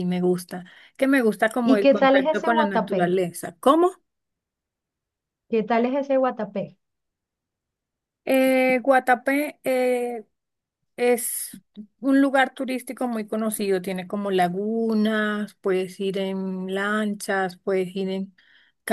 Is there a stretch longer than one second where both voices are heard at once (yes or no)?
yes